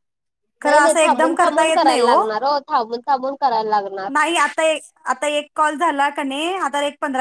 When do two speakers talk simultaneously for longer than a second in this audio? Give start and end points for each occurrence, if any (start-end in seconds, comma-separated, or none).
0.6-2.1